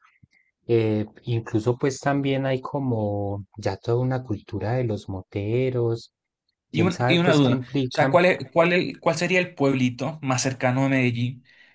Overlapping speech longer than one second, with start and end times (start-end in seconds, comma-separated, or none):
6.7-8.2